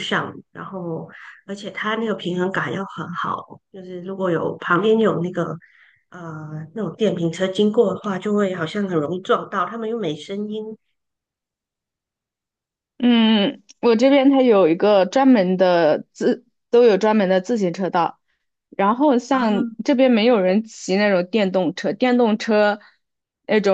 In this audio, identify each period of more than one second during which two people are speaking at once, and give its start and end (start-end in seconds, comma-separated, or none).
none